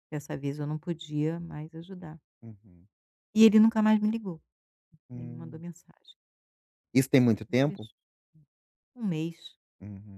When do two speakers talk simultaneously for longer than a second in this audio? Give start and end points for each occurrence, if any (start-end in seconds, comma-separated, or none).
none